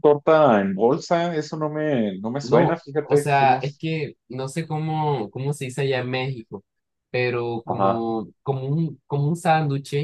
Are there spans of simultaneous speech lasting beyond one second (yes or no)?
yes